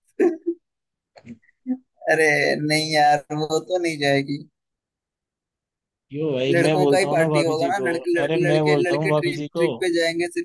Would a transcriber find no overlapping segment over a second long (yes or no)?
no